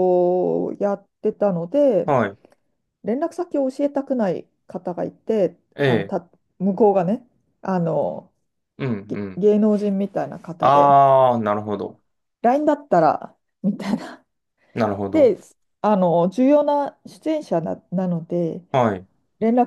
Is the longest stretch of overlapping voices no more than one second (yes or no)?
yes